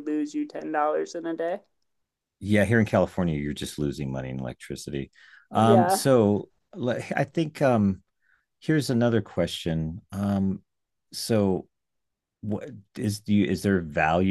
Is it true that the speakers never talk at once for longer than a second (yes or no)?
yes